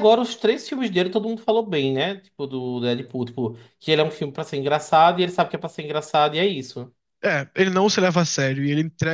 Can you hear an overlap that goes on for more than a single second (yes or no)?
no